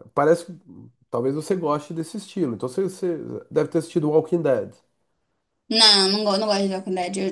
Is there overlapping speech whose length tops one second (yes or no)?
no